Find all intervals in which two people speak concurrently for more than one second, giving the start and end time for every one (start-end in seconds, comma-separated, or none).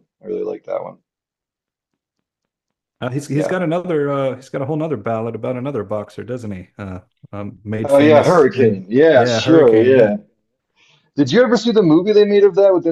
7.8-10.1